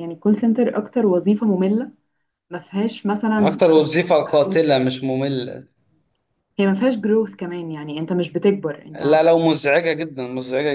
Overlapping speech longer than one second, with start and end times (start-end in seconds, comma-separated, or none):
none